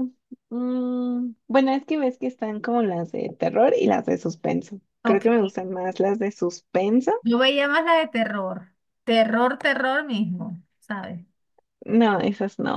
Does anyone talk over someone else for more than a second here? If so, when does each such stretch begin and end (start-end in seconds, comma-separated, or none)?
none